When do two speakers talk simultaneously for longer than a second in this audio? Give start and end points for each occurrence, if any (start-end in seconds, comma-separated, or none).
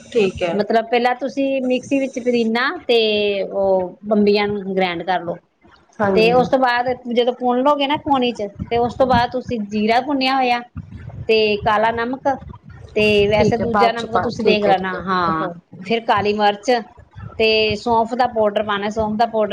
13.4-15.2